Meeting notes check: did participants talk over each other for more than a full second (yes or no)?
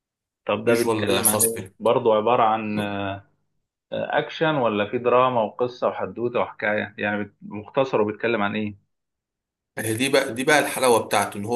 yes